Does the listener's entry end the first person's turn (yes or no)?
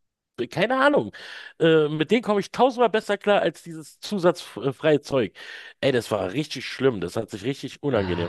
yes